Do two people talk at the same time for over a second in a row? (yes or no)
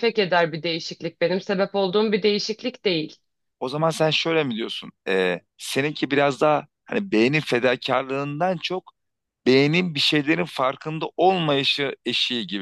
no